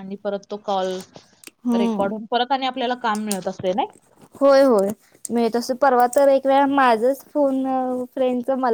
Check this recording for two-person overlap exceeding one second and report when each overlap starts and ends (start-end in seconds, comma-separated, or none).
none